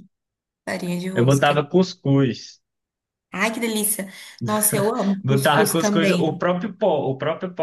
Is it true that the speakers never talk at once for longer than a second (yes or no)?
no